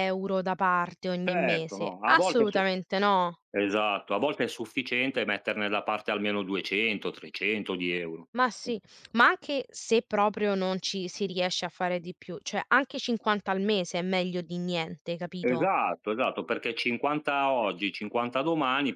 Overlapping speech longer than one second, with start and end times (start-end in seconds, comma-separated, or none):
1.2-2.6